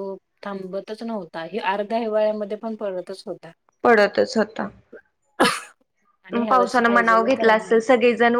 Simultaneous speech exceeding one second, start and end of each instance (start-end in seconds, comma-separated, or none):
6.5-7.8